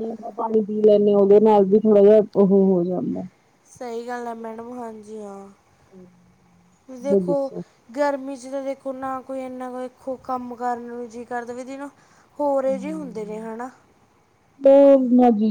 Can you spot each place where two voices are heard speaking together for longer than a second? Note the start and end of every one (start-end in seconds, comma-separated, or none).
none